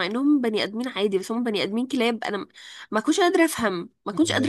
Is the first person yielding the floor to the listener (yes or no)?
yes